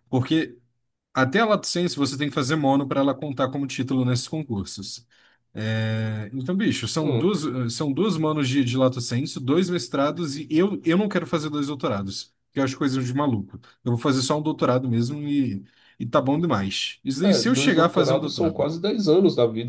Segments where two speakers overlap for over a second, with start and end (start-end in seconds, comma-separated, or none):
17.2-18.7